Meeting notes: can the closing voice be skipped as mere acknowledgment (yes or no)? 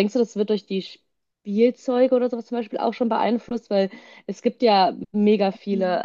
yes